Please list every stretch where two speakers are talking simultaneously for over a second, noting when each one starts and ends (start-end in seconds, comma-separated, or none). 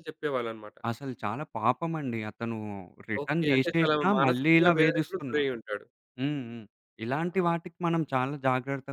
3.2-5.5